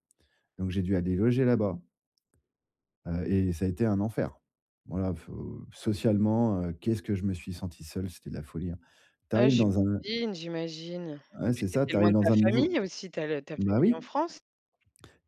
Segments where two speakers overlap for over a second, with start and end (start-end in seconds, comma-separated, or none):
11.4-12.7